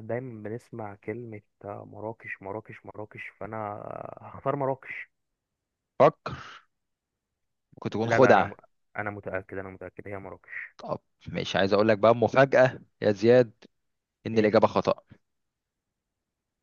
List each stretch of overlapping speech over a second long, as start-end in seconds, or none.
none